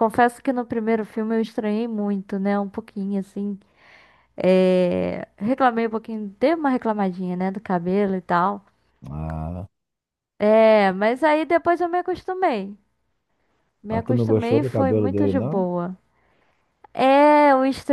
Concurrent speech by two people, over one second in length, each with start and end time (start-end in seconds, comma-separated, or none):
13.9-15.7